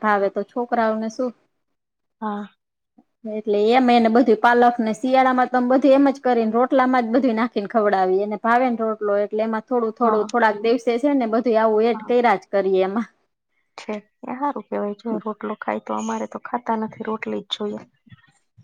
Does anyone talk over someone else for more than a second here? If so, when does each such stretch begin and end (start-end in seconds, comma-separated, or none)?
none